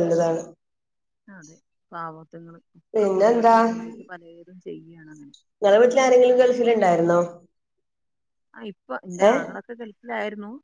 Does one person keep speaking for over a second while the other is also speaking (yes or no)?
no